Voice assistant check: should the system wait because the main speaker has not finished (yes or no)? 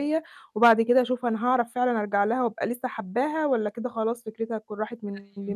yes